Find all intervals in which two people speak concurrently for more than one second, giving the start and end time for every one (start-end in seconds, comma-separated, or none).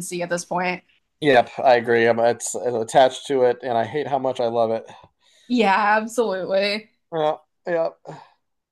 none